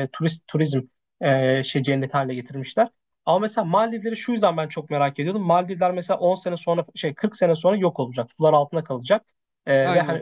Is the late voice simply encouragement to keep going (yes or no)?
yes